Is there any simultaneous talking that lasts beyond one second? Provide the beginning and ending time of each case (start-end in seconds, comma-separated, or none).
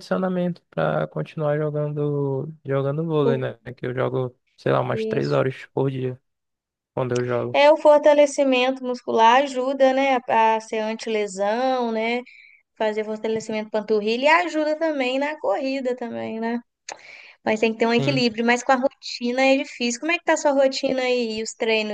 none